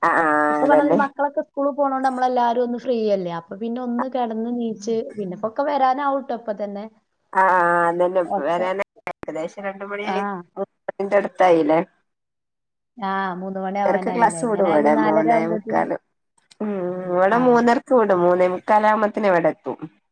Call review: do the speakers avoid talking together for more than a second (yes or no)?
no